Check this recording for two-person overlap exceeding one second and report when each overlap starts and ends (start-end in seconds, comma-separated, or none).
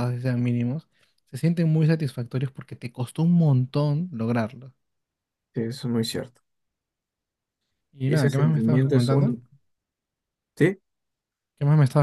8.1-9.3